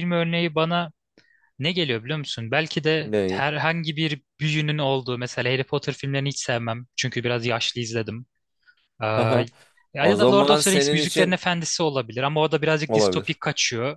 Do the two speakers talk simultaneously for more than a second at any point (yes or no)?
yes